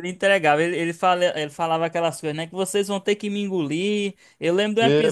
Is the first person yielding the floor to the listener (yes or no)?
no